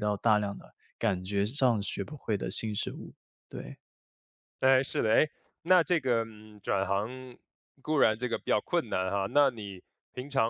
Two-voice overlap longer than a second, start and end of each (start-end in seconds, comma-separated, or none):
none